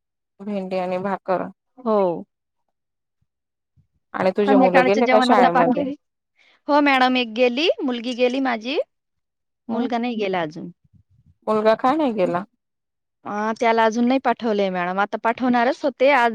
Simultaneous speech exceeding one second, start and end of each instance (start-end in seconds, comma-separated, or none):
4.5-5.8